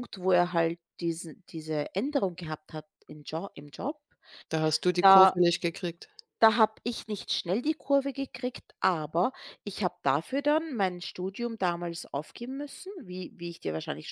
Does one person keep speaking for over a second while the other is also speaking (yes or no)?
no